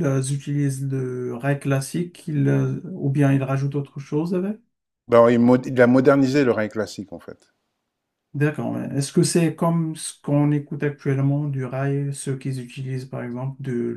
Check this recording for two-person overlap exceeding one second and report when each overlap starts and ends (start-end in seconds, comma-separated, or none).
none